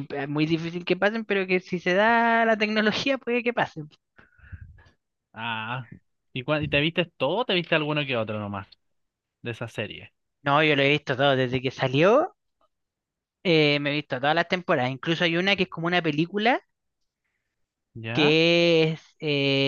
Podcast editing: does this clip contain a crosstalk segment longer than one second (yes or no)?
no